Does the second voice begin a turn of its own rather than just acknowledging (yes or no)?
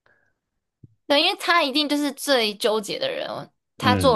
no